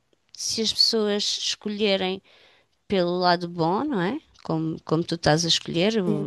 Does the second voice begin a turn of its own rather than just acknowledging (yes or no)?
no